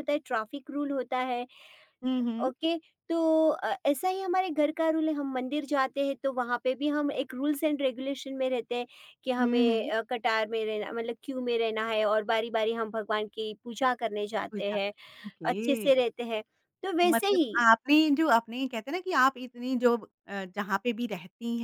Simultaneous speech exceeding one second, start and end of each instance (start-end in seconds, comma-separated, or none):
none